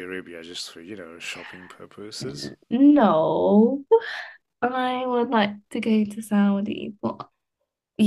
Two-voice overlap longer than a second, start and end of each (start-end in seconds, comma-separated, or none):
none